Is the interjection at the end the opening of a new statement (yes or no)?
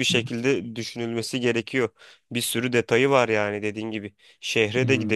no